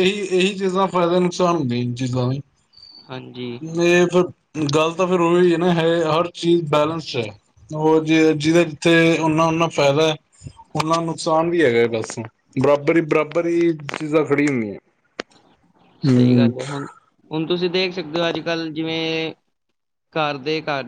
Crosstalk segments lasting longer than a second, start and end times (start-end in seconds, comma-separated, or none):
none